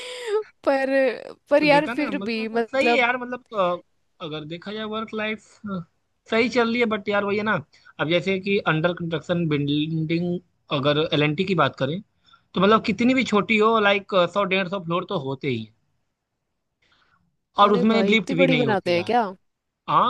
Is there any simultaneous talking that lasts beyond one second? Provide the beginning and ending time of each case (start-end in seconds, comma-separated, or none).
1.6-3.1, 17.7-19.1